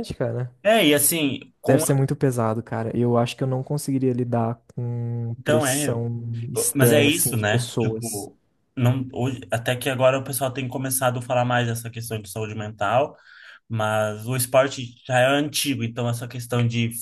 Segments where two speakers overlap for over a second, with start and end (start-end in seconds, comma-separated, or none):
6.7-8.3